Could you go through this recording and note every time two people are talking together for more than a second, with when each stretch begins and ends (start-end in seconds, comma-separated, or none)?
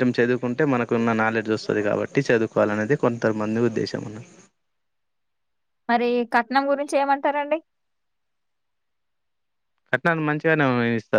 none